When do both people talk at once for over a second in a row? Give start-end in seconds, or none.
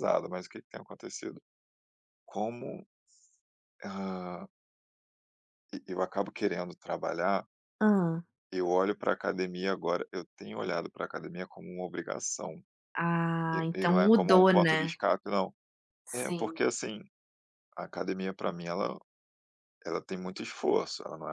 13.5-15.0